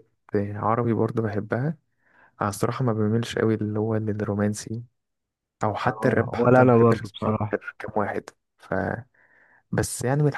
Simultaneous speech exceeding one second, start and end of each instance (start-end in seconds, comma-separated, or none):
5.9-7.5